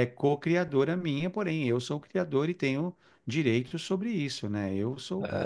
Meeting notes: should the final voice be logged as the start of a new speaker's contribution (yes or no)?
no